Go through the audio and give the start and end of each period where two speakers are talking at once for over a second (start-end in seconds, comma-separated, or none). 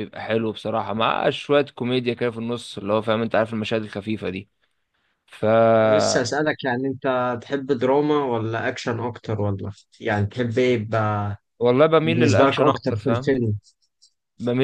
12.0-13.3